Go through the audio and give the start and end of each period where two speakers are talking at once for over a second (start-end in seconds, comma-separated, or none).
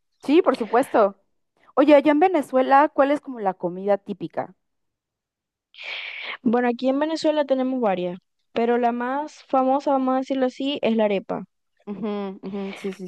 none